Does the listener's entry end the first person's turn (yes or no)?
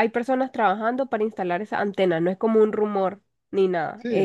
yes